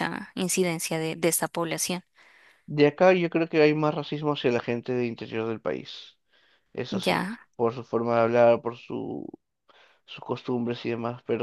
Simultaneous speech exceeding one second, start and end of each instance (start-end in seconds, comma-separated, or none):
none